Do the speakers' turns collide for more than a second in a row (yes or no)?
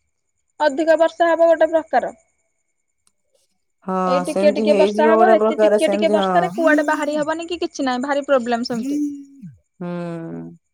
yes